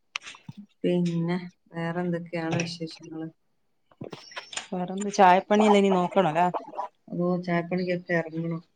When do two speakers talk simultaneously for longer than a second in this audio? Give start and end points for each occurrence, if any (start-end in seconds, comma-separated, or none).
none